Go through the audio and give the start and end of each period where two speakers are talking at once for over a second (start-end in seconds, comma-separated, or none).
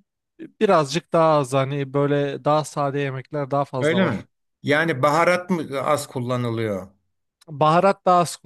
none